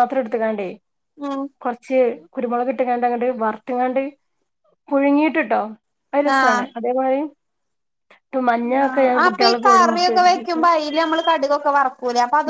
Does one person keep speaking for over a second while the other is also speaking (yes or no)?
yes